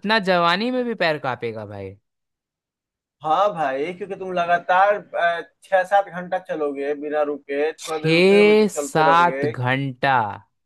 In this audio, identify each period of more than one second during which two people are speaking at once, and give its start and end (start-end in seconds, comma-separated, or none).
7.8-9.4